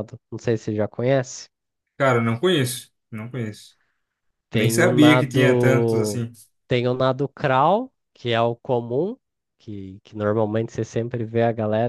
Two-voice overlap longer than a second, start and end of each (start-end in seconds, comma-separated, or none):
4.5-6.2